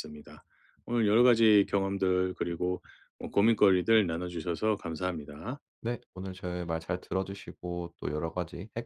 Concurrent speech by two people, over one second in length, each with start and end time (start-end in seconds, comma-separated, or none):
none